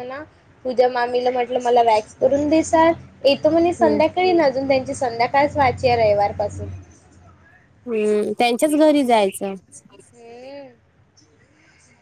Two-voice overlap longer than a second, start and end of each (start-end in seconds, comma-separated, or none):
none